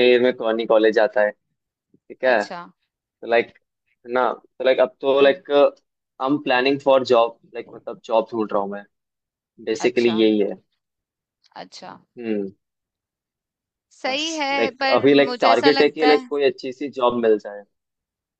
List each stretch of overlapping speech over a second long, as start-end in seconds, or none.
14.1-16.3